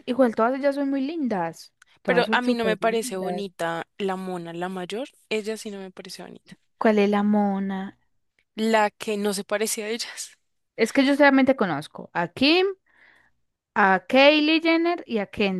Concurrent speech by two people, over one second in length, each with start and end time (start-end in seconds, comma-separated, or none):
2.1-3.4